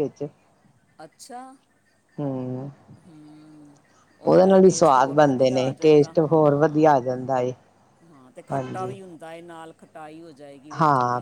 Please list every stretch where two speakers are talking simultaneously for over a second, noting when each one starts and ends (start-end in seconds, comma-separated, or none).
4.6-6.9